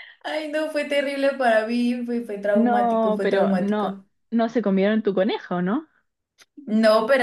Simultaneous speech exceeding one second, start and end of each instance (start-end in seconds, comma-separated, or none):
2.5-4.0